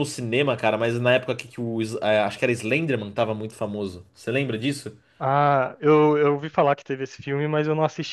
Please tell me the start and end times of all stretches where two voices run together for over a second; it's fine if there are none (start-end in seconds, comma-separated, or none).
none